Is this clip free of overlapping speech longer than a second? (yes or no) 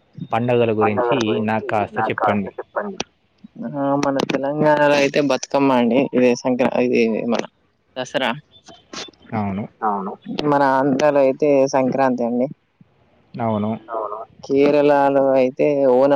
yes